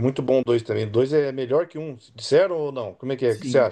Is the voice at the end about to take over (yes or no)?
yes